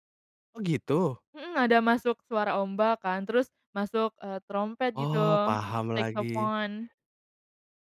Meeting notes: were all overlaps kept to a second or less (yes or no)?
yes